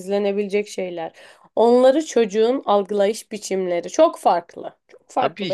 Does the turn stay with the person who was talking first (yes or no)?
no